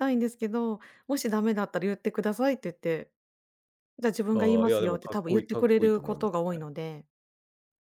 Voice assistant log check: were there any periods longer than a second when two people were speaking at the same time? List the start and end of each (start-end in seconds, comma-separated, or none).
4.3-6.7